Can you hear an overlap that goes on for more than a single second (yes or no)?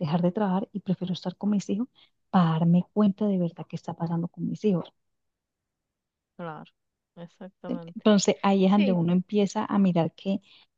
no